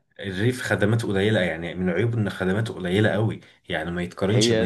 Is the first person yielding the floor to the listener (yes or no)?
no